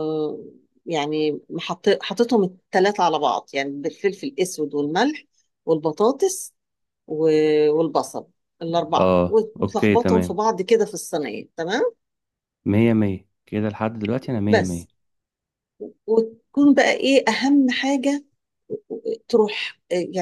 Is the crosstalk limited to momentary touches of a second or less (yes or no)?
no